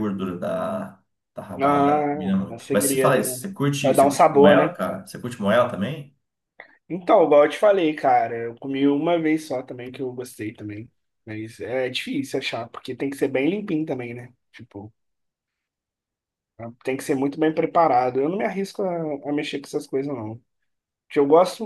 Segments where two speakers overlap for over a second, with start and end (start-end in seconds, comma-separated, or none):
1.6-4.8